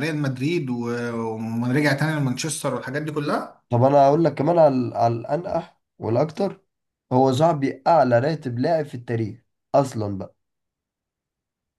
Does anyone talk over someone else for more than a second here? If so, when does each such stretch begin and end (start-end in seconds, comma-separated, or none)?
none